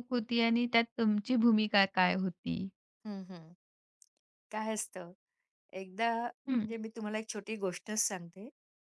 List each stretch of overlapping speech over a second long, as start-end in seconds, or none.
none